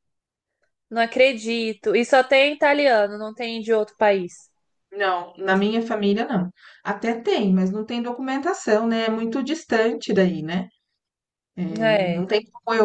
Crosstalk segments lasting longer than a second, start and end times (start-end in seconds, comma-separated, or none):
none